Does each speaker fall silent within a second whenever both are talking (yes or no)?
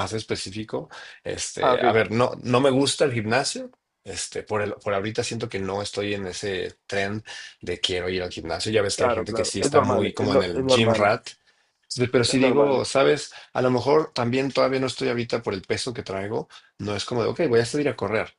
no